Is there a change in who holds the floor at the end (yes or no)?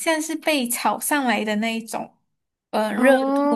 no